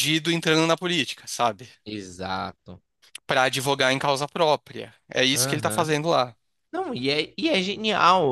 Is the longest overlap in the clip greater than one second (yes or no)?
no